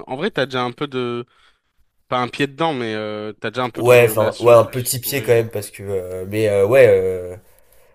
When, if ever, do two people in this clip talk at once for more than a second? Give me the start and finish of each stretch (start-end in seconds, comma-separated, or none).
3.8-5.5